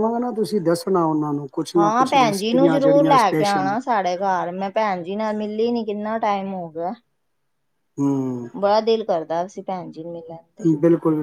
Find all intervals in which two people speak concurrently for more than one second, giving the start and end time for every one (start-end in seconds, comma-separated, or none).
1.8-3.7